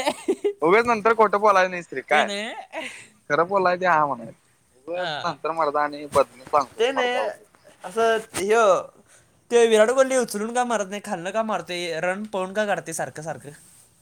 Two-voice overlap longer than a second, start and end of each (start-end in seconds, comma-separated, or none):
none